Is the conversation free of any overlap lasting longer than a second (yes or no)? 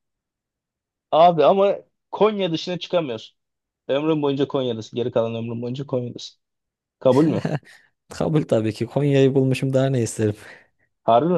yes